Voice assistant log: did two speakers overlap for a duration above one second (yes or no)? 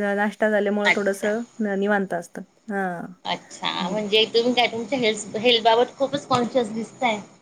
no